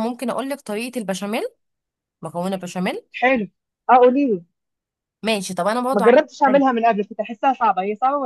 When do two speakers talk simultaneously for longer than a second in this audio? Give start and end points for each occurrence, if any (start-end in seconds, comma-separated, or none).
none